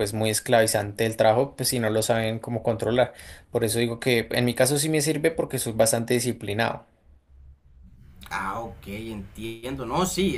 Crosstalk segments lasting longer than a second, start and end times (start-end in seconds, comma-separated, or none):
none